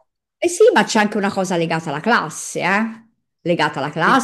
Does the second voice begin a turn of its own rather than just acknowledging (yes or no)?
yes